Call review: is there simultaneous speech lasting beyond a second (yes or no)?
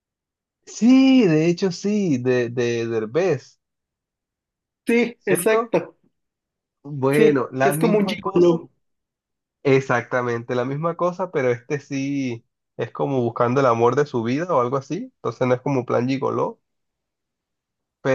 yes